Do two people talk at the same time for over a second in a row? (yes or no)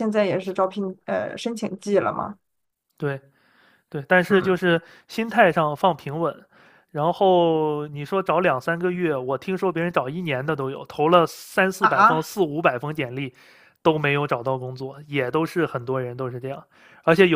no